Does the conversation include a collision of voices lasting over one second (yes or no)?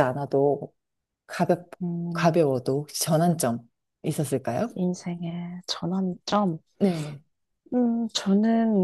no